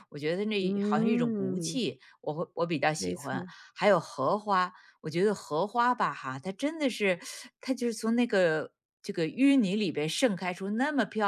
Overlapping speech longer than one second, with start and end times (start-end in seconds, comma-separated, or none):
0.6-1.8